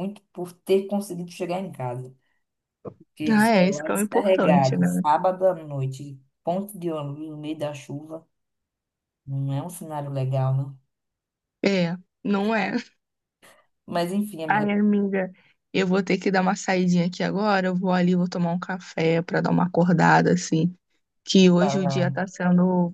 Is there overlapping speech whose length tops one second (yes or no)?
yes